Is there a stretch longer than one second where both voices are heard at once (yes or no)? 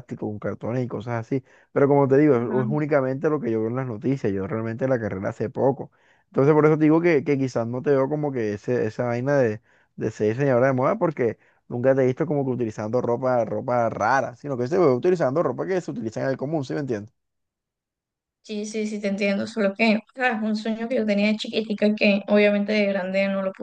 no